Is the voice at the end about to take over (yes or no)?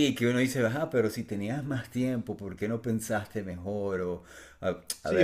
yes